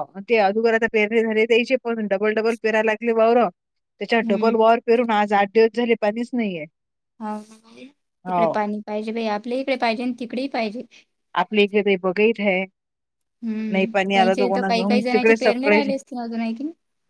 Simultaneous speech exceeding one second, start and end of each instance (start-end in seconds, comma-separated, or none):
13.7-15.9